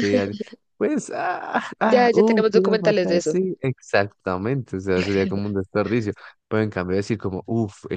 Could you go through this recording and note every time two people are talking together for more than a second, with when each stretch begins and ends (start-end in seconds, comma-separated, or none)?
1.8-3.4